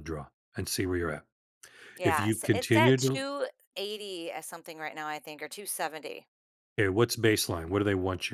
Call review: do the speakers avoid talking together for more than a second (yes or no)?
no